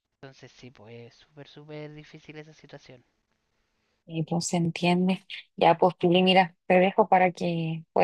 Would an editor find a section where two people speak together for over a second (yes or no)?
no